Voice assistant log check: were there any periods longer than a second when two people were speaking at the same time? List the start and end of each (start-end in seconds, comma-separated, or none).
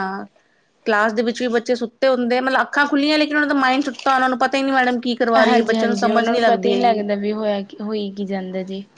5.5-7.0